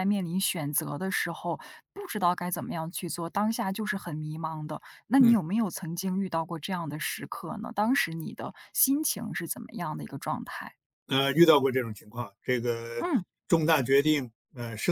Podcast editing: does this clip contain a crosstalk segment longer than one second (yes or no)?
no